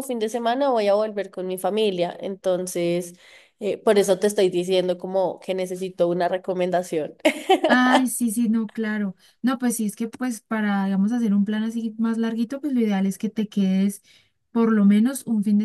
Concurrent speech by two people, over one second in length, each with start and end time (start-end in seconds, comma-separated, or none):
none